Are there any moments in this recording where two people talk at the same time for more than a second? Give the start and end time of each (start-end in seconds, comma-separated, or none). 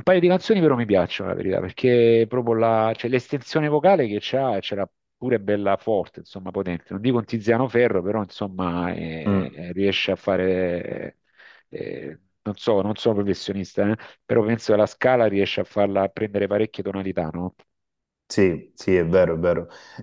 none